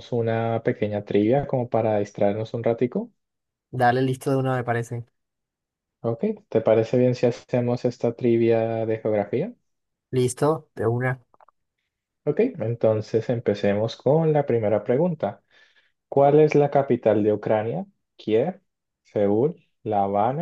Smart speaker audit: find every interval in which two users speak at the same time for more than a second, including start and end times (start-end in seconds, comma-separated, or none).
none